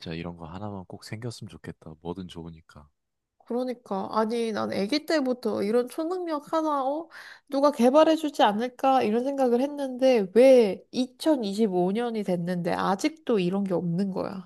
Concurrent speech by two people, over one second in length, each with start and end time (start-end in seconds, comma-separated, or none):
none